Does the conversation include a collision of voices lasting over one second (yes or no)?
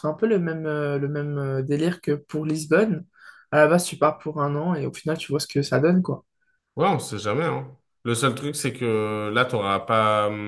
no